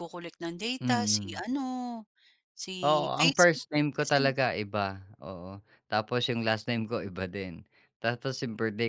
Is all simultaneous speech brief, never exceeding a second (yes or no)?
no